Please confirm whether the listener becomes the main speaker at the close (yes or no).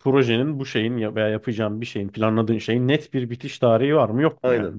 yes